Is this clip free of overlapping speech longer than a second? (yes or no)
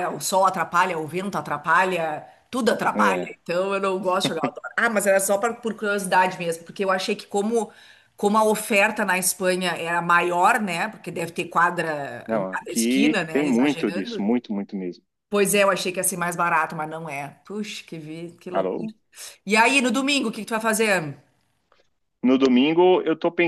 no